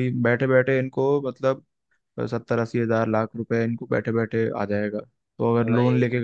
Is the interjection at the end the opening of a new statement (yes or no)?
no